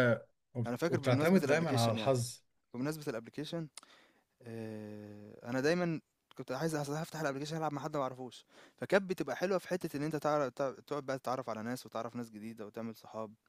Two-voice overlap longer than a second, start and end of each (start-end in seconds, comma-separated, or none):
0.7-2.2